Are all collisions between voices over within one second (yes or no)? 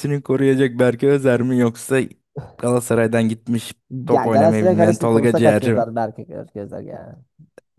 no